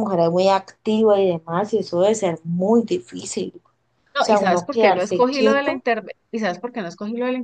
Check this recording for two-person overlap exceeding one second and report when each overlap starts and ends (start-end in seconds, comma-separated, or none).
4.2-5.8